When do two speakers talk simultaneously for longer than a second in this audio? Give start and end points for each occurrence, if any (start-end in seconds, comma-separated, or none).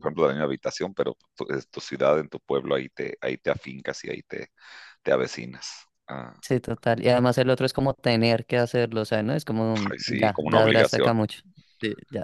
9.9-11.1